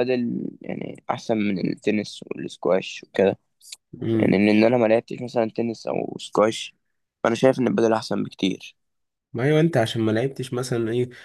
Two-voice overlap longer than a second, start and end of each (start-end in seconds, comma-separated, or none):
none